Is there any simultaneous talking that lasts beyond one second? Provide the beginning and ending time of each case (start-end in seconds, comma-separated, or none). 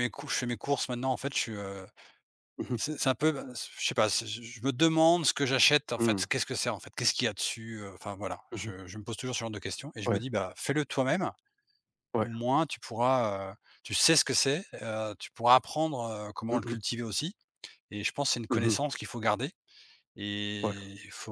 none